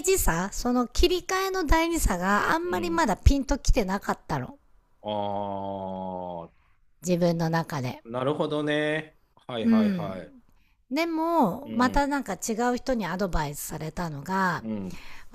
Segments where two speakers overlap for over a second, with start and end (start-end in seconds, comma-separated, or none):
none